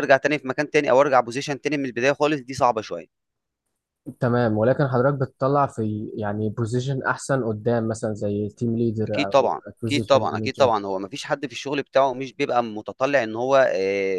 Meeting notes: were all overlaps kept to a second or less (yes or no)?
no